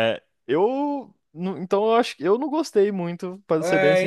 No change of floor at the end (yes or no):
no